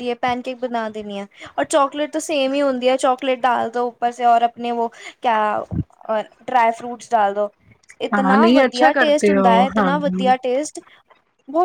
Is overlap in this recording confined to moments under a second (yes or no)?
no